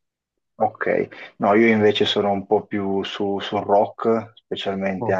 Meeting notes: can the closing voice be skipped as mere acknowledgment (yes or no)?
yes